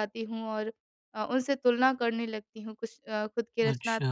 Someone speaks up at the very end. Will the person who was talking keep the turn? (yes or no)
yes